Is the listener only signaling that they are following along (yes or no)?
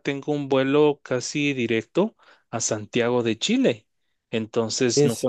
yes